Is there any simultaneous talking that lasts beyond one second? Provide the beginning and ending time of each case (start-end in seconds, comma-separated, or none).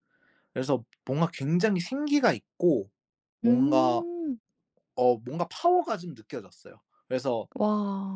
none